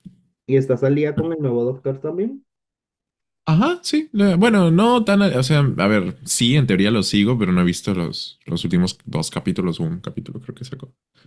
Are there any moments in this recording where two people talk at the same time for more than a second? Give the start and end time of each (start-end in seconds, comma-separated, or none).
none